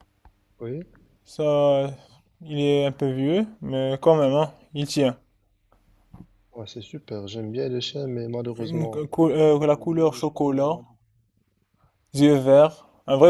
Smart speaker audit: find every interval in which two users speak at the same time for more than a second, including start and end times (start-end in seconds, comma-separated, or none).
none